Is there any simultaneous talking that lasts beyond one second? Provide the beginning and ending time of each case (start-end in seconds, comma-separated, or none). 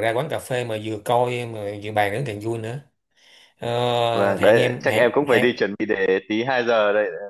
4.1-5.6